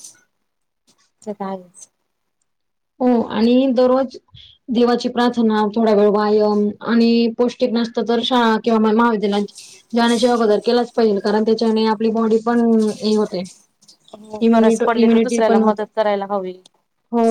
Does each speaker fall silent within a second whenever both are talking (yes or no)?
no